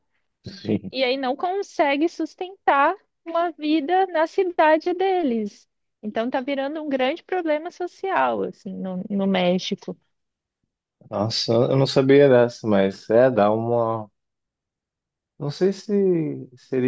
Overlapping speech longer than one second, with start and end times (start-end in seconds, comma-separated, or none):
none